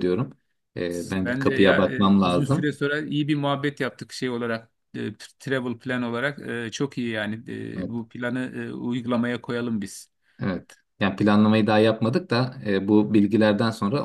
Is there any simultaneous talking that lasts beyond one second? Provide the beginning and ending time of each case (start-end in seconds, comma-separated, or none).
1.2-2.8